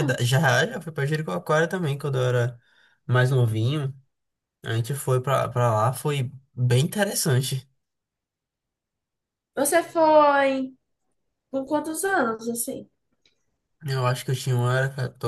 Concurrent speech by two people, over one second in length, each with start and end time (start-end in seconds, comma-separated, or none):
none